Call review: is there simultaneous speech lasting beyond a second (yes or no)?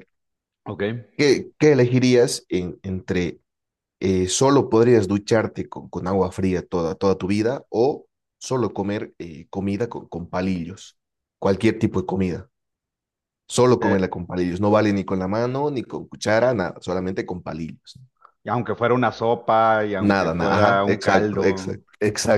yes